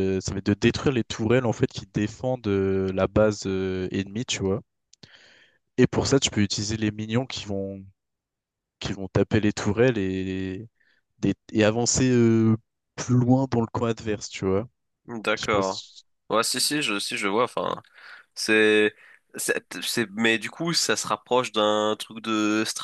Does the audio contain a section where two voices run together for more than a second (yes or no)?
no